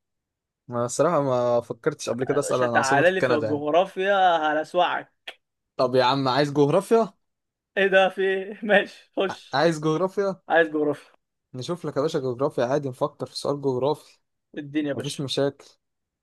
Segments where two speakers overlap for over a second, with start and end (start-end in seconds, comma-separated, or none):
2.3-3.6